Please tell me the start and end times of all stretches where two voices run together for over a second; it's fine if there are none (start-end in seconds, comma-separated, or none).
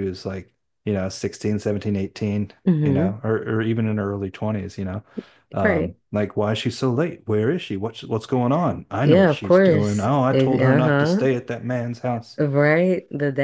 9.0-11.3